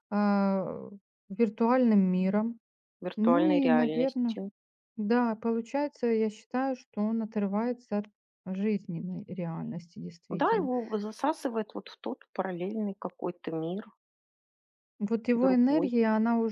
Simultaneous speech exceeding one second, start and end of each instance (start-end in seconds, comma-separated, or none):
3.2-4.4